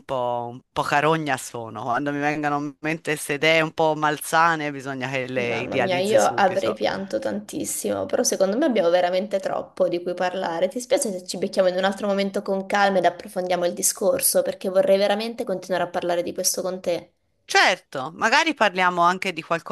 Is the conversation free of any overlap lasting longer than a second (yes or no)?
no